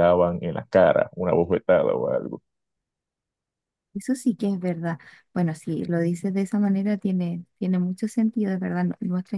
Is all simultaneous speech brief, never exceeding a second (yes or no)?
yes